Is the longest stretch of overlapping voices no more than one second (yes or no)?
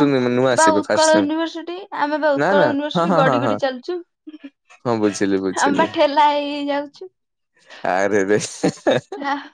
no